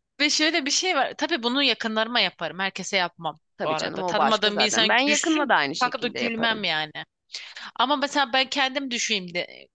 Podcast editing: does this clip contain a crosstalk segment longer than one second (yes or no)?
yes